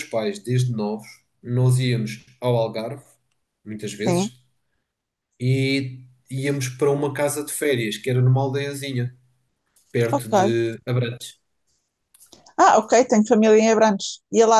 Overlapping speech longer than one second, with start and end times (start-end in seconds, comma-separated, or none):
none